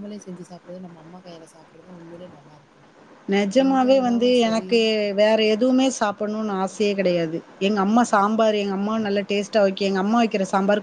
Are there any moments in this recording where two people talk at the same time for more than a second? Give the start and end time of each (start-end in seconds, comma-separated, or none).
none